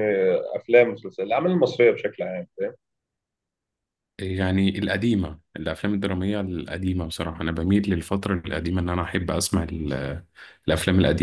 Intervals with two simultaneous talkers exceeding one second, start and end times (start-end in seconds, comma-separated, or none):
none